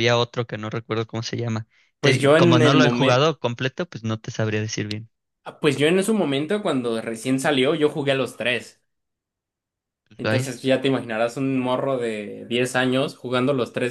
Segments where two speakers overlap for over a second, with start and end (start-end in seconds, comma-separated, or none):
2.0-3.3